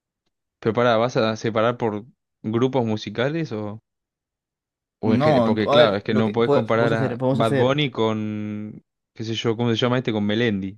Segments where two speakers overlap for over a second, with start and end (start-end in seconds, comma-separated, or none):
5.0-7.8